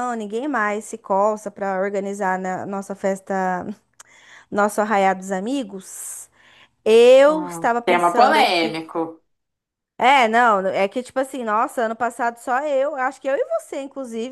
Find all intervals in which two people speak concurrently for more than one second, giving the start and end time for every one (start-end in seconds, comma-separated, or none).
7.3-8.8